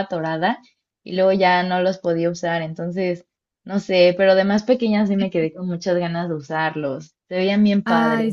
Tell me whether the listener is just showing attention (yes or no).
no